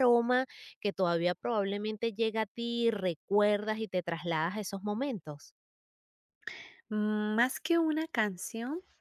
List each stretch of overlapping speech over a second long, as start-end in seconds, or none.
none